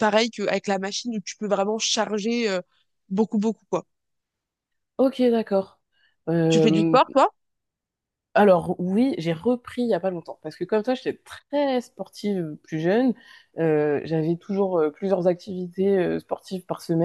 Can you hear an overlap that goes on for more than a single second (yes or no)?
no